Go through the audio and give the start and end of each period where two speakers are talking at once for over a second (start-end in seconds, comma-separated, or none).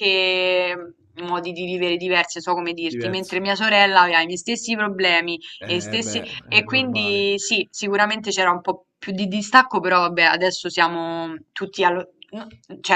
5.6-7.3